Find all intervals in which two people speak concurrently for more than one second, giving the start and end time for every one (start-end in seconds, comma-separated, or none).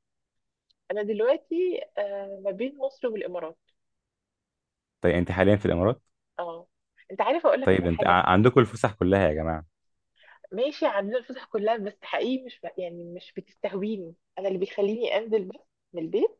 none